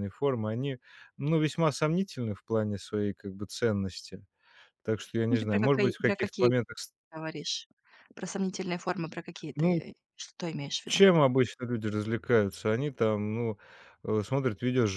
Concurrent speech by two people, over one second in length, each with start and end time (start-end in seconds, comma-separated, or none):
5.3-6.5